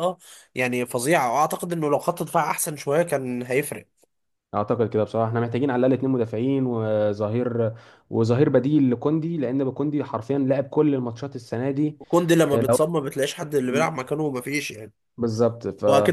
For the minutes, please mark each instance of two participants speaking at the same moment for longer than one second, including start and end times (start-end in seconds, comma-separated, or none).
none